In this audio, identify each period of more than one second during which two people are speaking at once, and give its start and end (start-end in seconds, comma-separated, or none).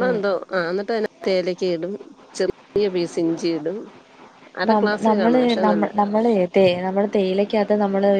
none